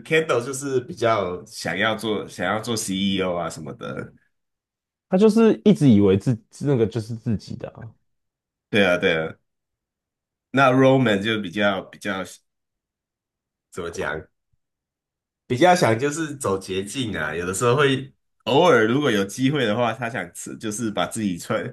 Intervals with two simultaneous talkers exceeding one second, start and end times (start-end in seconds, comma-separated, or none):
none